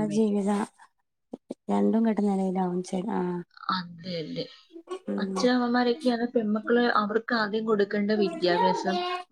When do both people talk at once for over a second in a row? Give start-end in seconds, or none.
none